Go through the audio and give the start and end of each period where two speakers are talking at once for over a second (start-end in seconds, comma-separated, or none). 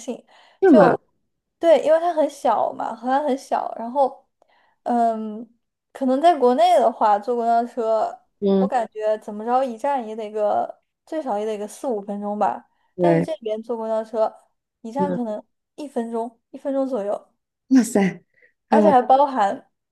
none